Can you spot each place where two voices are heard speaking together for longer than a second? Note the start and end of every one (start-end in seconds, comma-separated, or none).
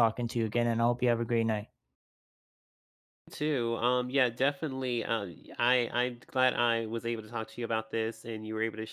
none